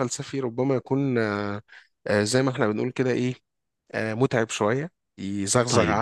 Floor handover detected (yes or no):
no